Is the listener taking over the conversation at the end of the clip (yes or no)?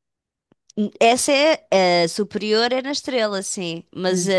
no